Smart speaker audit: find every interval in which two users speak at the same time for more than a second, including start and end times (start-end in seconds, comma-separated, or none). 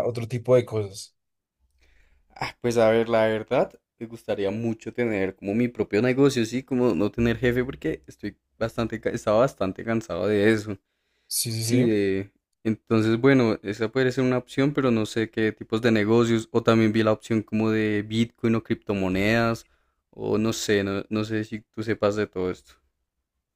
none